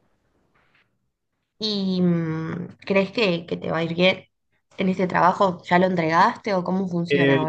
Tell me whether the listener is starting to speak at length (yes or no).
yes